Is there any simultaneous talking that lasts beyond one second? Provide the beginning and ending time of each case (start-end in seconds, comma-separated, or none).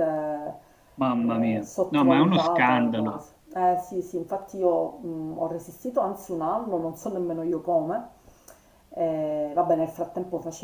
1.1-3.2